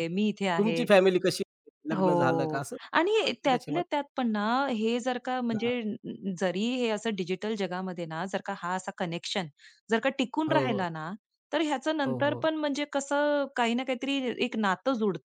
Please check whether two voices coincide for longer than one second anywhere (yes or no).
yes